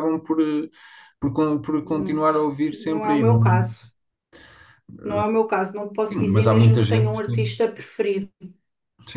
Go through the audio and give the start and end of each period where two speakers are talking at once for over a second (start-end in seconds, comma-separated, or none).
1.8-3.9, 6.1-7.5